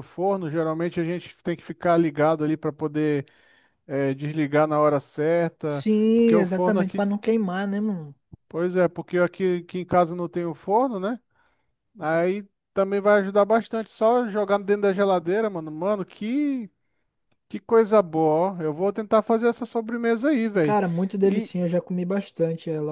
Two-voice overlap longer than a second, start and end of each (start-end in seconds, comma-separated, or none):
5.7-7.0